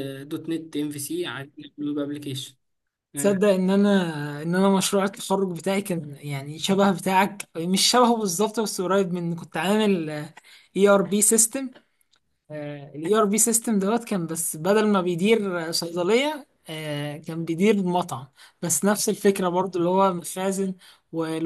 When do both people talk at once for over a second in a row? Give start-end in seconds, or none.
none